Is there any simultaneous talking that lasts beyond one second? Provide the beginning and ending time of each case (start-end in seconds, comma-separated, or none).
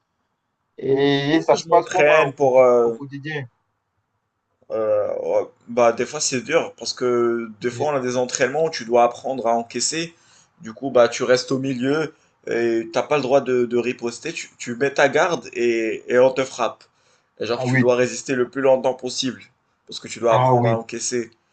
0.8-3.0